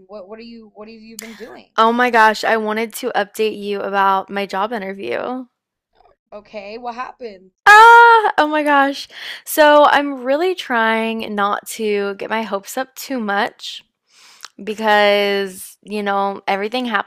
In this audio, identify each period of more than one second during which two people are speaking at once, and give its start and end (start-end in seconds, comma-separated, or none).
none